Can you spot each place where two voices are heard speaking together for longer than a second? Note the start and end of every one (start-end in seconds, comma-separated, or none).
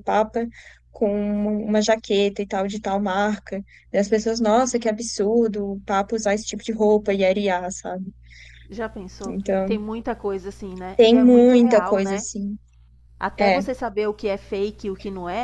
10.9-12.2